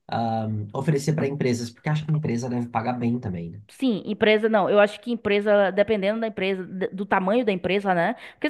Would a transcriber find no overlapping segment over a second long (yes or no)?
yes